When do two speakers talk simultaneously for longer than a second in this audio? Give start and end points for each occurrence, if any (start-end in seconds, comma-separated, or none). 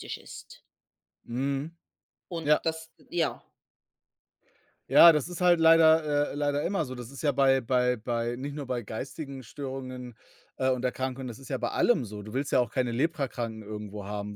none